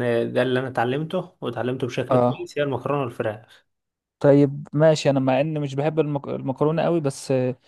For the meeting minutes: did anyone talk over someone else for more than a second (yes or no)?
no